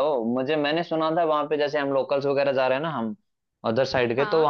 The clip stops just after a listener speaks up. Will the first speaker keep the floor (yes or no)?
yes